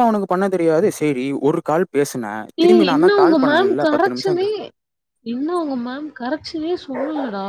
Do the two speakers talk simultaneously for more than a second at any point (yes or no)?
yes